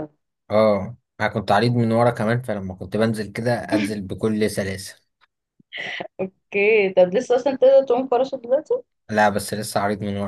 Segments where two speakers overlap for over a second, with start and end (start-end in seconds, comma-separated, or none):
none